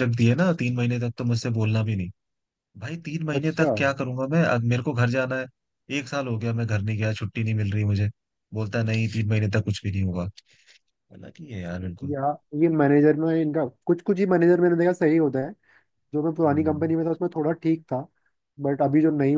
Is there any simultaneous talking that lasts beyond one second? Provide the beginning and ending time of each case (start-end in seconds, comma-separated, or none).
none